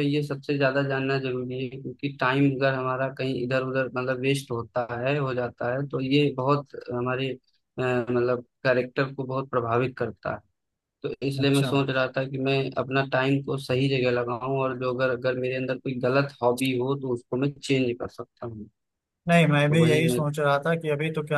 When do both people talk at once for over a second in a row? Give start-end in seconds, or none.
none